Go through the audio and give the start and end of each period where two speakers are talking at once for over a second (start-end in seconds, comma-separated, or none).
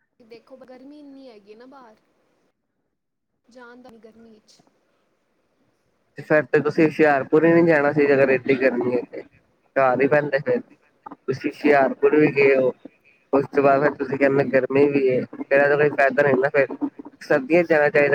none